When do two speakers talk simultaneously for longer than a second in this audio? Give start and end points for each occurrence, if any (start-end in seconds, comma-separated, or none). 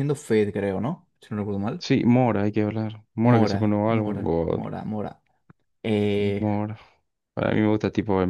3.2-4.6